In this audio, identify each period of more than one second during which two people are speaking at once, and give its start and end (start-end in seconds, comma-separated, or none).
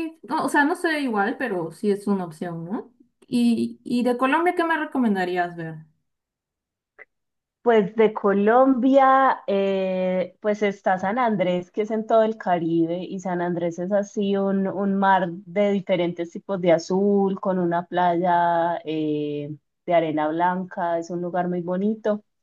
none